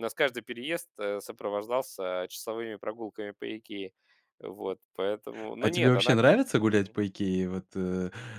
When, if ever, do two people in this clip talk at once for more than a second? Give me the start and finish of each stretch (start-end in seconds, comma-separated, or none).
none